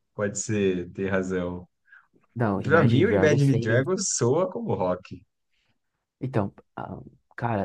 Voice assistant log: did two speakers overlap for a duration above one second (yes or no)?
yes